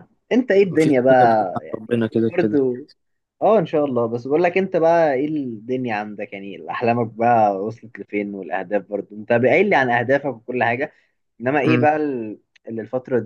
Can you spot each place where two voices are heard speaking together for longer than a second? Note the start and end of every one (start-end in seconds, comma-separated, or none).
0.6-2.6